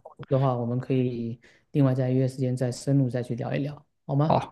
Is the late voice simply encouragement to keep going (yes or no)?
no